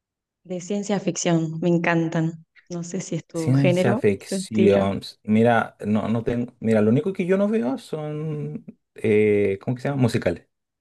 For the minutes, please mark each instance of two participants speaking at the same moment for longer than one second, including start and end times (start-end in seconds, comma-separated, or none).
3.3-4.9